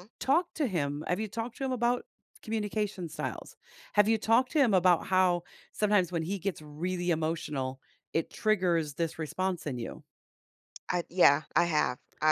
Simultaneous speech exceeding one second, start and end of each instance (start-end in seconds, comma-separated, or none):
none